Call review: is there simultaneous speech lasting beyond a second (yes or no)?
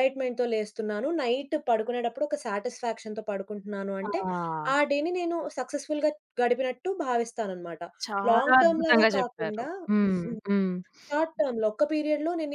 yes